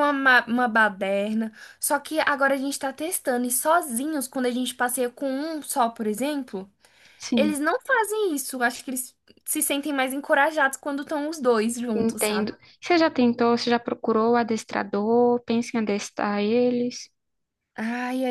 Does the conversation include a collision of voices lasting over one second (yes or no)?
no